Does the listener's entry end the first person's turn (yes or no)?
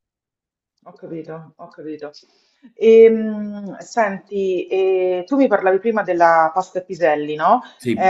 no